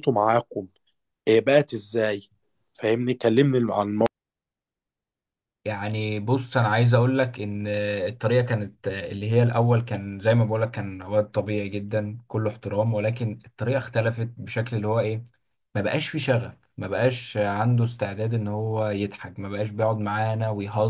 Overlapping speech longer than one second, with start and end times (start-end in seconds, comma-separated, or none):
none